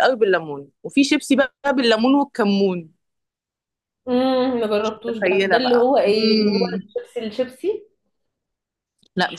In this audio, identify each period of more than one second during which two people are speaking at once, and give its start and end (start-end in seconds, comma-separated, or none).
4.8-6.8